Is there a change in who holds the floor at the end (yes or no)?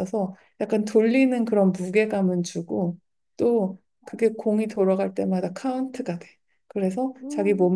no